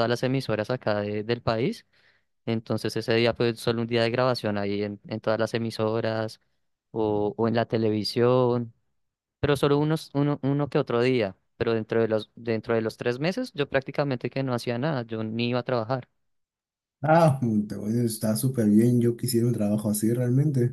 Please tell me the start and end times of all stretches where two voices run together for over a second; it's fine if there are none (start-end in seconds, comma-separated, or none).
none